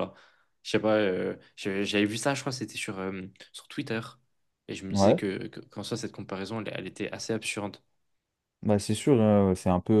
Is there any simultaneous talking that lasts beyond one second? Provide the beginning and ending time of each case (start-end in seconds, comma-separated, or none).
none